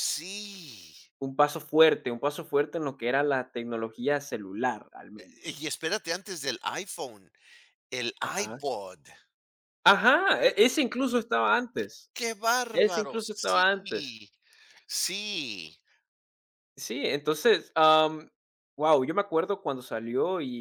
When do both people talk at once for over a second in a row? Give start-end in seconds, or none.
12.7-14.2